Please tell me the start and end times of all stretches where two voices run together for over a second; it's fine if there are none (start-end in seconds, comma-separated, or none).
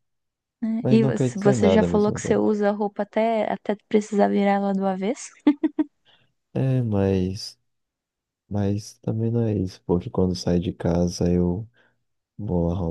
0.8-2.4